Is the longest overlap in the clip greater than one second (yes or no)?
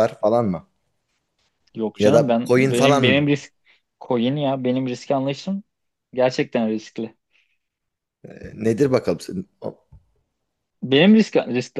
yes